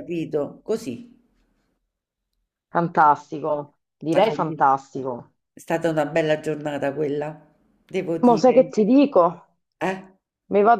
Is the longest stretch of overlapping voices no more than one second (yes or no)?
yes